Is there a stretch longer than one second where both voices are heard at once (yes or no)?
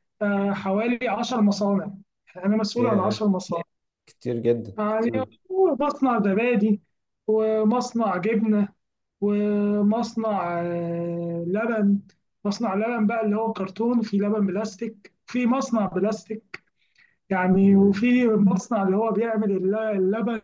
no